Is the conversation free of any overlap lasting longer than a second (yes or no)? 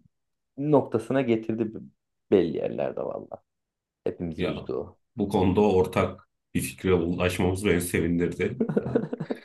yes